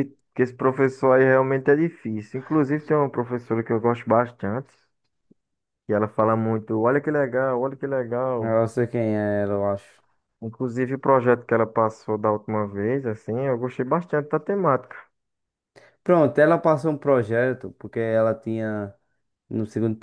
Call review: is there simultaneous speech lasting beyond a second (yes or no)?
no